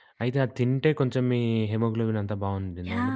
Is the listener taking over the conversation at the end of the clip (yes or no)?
yes